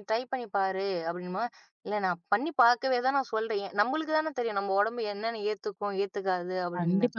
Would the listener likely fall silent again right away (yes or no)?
no